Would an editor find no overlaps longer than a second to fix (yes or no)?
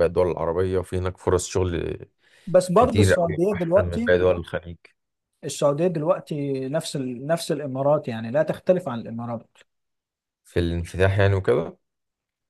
no